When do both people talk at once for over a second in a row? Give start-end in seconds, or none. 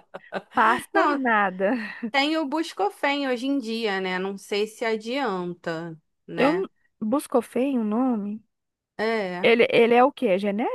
none